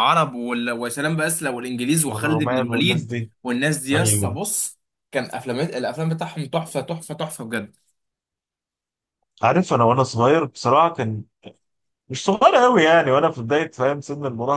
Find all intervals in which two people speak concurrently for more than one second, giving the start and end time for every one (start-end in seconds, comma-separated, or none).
2.1-3.3